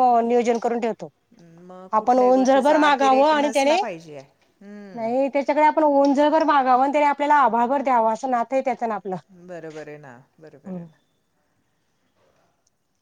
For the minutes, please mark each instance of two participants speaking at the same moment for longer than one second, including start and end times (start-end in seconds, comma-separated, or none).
2.0-3.8